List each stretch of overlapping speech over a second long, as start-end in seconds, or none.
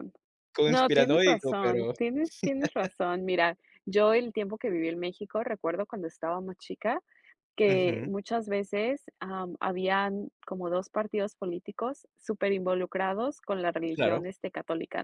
0.7-1.9